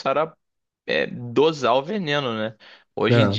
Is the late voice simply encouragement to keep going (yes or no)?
yes